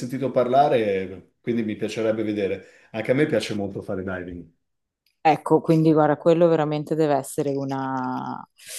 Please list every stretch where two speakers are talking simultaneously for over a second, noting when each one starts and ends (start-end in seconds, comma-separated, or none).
none